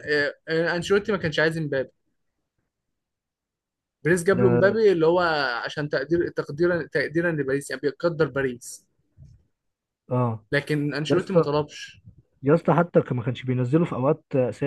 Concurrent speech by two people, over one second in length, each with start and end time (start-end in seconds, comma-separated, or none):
none